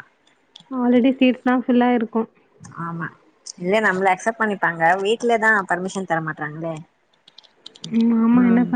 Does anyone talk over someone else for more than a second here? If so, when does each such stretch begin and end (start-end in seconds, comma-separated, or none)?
none